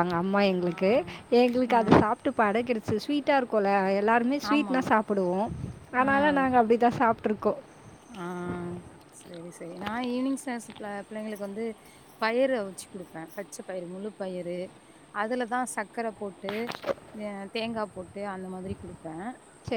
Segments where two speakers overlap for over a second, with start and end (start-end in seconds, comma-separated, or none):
none